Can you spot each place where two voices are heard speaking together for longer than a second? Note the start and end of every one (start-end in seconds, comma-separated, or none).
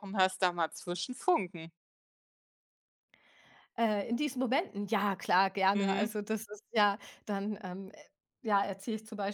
none